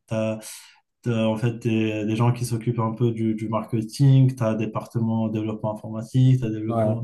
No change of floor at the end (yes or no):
yes